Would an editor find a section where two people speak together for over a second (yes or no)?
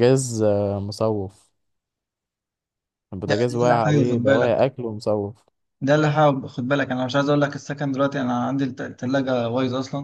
yes